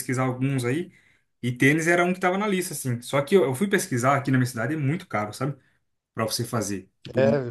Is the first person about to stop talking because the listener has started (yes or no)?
no